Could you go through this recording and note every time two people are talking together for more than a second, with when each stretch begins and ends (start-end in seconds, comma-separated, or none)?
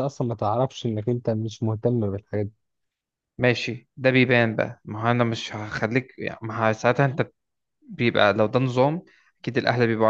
none